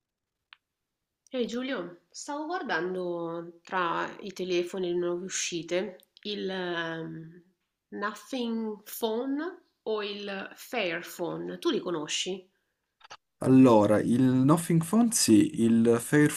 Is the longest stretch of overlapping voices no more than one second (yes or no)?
yes